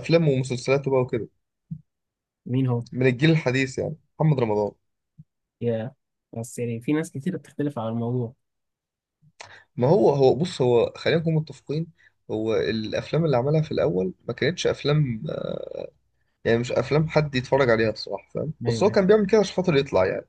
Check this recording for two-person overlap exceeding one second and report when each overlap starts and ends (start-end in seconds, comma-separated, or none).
none